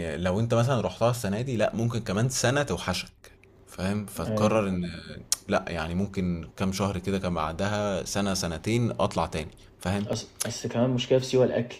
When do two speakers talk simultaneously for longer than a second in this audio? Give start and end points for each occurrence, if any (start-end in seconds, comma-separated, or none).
none